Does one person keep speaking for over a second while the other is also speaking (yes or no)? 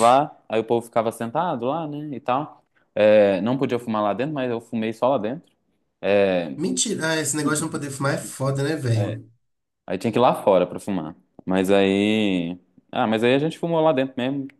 no